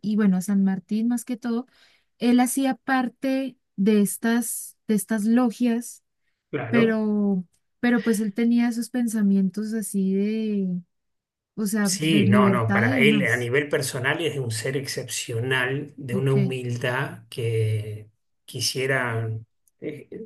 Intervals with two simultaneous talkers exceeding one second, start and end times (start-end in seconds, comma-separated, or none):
11.8-13.5